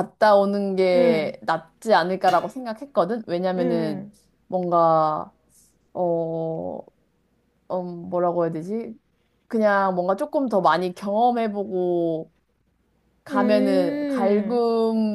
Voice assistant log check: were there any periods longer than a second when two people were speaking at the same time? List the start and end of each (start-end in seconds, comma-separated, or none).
13.3-14.6